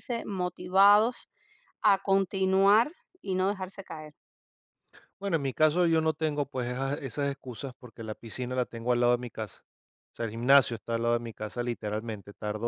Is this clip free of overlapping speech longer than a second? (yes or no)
yes